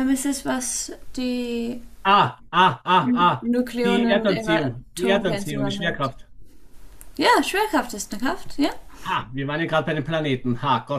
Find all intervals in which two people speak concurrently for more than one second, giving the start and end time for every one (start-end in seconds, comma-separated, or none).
3.4-6.1